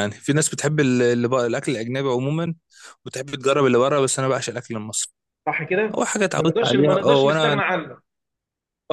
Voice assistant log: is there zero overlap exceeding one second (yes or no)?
no